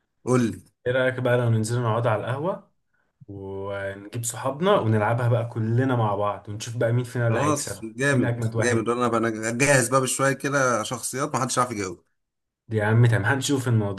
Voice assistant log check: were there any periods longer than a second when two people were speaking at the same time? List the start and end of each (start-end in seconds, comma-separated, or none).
7.3-8.9